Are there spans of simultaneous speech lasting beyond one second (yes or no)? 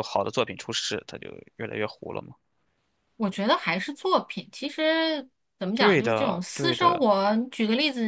yes